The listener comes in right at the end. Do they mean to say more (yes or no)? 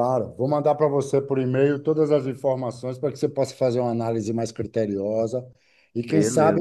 no